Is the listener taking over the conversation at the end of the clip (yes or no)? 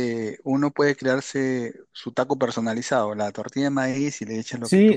yes